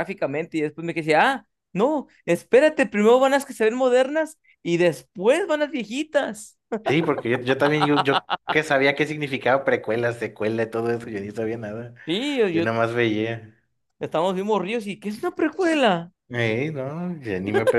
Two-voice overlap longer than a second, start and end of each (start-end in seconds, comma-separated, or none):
none